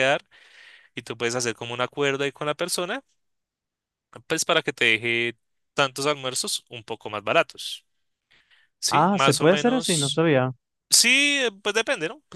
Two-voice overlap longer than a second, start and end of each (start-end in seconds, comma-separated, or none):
8.9-10.2